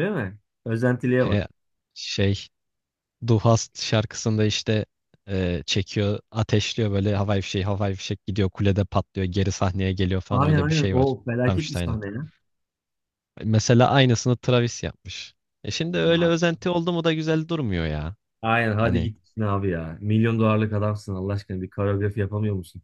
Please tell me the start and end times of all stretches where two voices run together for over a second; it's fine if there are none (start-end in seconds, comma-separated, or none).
10.3-12.0